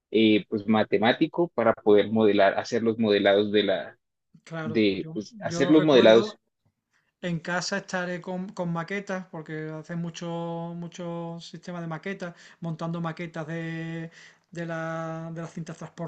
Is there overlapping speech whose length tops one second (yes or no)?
yes